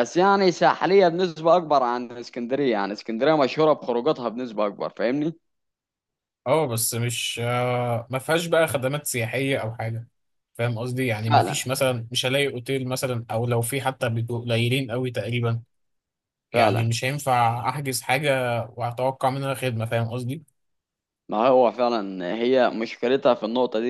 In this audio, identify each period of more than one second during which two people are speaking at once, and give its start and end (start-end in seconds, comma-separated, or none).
none